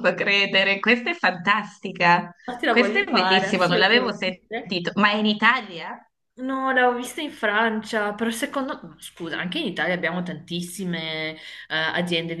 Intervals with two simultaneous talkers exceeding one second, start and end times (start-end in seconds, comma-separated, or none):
2.7-4.8